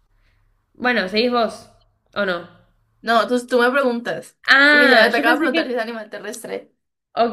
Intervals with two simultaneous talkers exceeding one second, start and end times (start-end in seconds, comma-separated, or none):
4.5-5.8